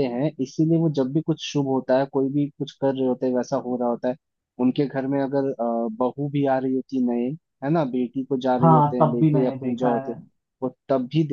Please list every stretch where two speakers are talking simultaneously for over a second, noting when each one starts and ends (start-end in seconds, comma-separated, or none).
8.6-10.2